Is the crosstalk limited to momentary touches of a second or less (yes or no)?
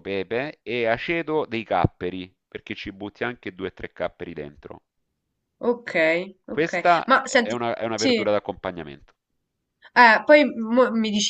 no